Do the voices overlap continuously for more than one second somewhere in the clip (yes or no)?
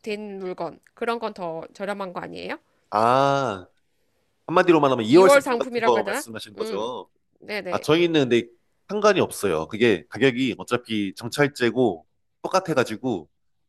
yes